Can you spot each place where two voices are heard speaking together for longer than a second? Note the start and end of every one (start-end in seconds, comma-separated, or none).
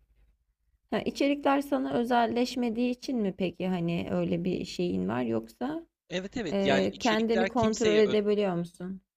6.5-8.2